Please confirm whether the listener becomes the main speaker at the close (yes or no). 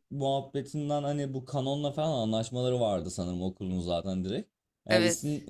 no